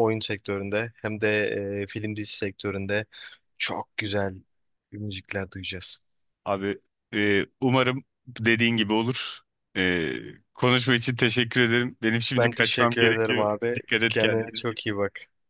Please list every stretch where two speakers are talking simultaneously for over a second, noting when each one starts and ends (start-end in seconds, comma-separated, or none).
12.4-14.6